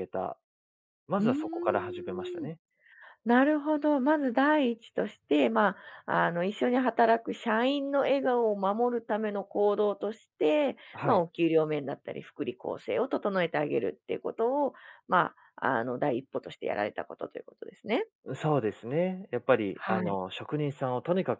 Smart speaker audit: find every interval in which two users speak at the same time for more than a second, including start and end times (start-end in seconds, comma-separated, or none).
1.2-2.5